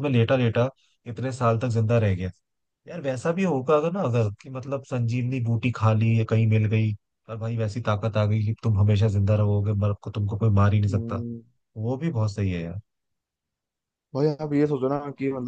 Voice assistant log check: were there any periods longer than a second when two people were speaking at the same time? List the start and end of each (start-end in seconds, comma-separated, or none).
none